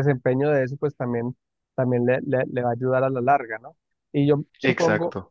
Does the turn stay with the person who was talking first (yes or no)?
yes